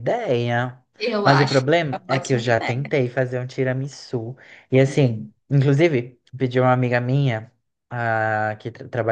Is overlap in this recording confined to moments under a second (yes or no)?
no